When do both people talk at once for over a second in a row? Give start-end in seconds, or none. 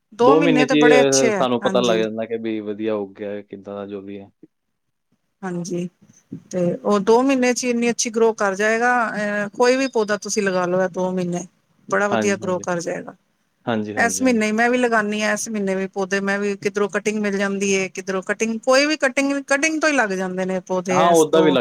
0.7-2.0